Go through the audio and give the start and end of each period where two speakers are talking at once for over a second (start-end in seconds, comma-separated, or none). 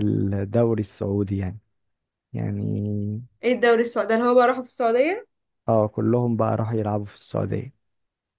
none